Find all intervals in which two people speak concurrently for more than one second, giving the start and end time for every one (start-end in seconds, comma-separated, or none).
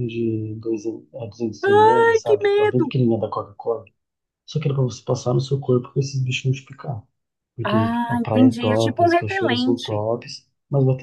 1.6-2.9, 7.6-10.0